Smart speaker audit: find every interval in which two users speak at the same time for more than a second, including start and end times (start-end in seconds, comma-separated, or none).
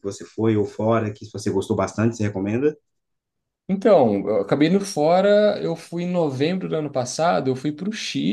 none